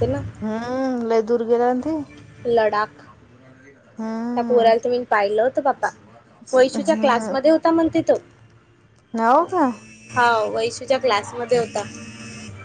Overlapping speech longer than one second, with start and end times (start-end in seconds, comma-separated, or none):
none